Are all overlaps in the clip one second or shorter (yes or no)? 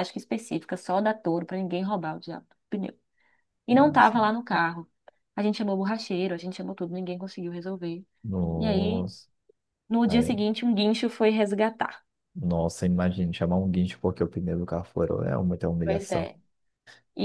yes